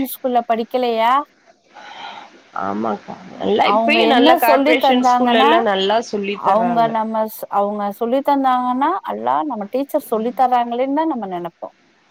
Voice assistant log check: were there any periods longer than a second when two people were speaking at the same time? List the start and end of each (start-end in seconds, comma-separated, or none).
3.7-5.5